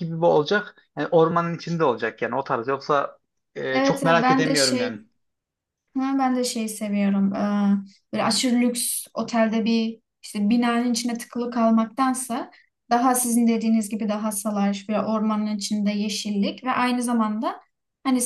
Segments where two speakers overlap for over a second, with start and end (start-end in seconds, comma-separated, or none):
3.7-4.9